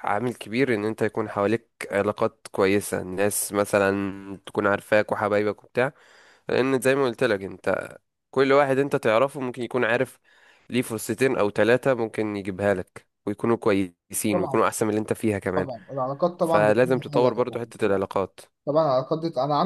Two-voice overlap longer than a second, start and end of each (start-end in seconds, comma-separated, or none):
16.4-18.0